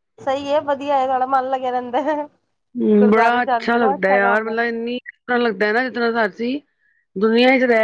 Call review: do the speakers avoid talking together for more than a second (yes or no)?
no